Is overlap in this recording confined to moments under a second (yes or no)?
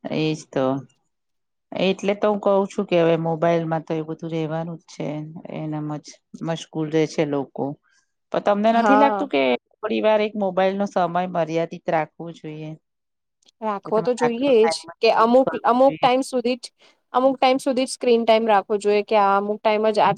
no